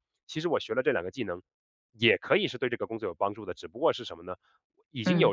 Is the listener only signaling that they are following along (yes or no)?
yes